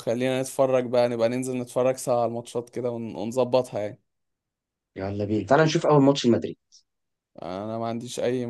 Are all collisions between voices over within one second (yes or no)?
yes